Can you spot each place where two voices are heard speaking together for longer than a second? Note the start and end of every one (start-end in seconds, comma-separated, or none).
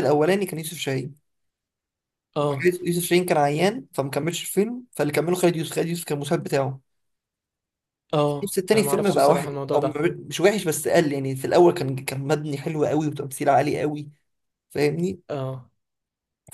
8.4-9.9